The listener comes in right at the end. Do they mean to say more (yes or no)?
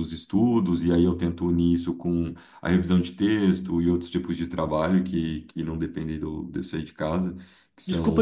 yes